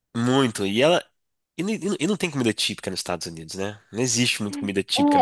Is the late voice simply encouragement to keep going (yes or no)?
no